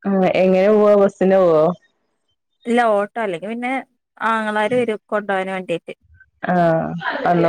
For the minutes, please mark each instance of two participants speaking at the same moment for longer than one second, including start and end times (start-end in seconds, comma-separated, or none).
none